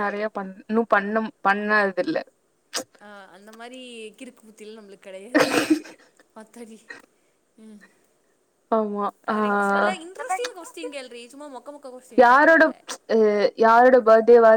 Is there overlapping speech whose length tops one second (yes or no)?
no